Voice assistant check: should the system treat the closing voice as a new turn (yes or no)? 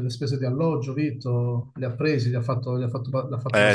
yes